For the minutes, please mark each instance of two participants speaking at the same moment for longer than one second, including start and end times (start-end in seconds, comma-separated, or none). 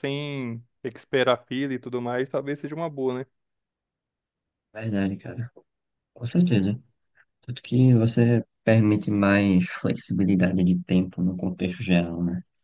none